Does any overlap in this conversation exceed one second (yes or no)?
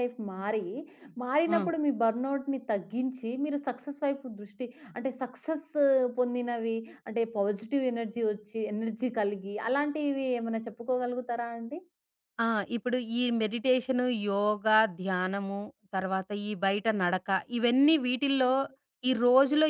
no